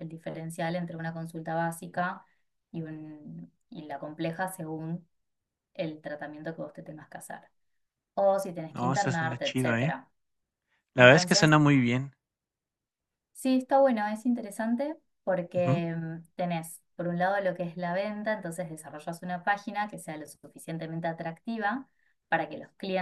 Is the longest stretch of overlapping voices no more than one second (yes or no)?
no